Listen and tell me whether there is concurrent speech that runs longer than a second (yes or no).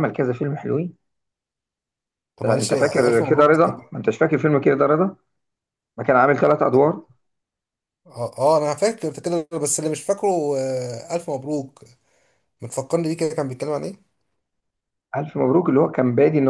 yes